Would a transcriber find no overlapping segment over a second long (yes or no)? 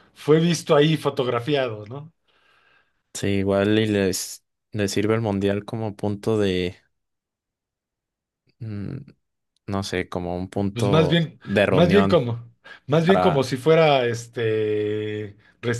no